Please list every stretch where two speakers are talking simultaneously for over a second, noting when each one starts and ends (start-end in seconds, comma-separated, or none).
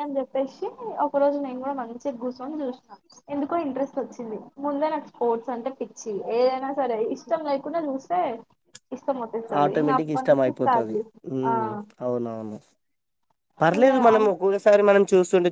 none